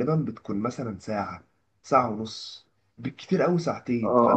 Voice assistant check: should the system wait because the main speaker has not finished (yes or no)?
no